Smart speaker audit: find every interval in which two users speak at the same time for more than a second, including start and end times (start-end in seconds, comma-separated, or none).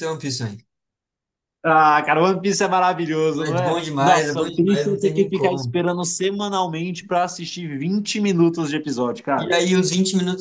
3.5-5.8